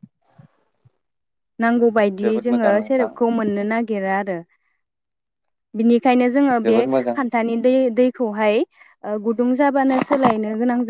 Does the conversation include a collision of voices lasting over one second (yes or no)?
yes